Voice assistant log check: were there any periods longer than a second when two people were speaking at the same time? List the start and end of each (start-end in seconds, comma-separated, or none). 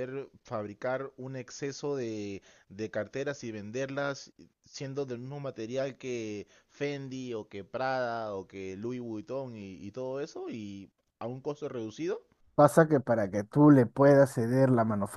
none